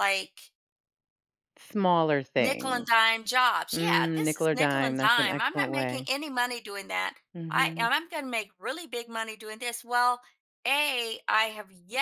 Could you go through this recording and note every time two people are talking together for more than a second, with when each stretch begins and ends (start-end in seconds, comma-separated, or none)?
3.7-6.1